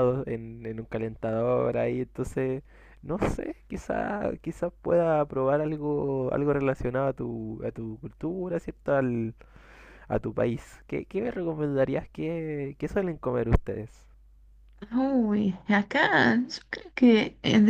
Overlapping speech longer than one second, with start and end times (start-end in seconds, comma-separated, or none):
none